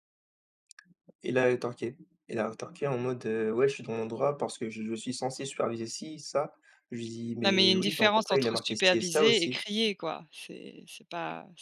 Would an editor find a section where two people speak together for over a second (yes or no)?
yes